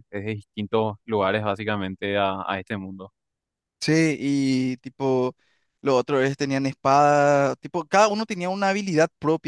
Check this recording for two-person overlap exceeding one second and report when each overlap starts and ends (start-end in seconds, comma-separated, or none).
none